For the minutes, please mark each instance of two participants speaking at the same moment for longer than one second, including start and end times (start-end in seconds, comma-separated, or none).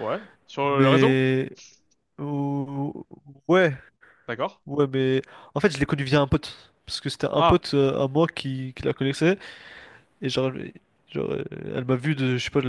none